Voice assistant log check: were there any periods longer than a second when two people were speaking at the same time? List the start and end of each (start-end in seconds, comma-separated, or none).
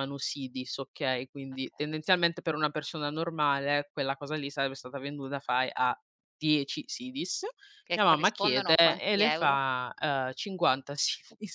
7.9-9.6